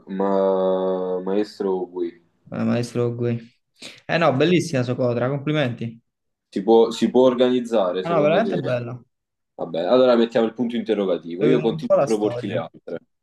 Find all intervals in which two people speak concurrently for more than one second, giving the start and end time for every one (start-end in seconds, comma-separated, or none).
11.4-12.6